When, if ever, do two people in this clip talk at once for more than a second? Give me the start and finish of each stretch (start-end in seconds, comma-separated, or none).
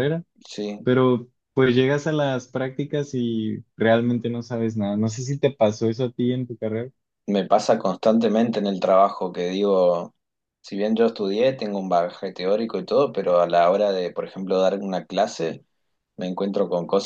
none